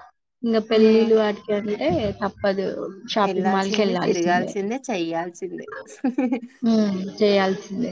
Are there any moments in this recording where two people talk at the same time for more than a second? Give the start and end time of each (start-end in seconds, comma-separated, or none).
3.3-4.5